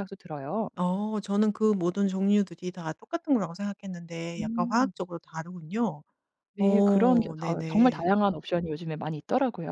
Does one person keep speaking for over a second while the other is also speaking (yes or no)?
yes